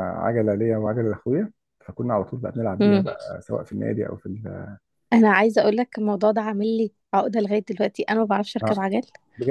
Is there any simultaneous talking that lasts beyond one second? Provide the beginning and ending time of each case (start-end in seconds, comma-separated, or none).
none